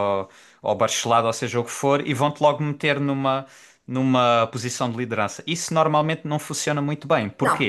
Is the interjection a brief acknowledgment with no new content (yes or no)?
yes